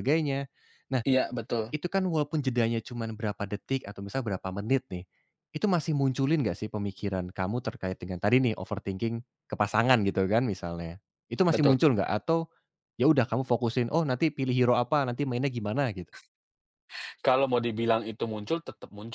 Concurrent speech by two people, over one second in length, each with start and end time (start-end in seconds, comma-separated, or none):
none